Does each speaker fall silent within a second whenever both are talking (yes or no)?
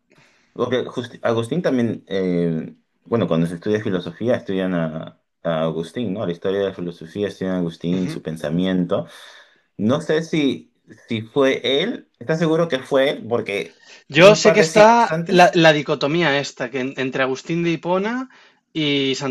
no